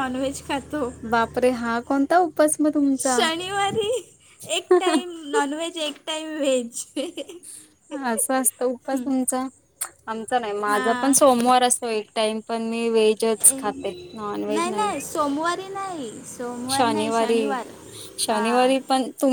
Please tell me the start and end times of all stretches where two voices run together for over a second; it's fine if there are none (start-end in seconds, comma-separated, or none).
none